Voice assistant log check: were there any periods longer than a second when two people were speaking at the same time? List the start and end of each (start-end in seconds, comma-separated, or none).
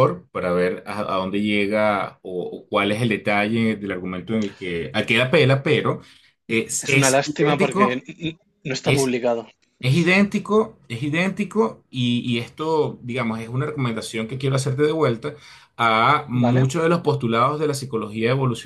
6.8-8.0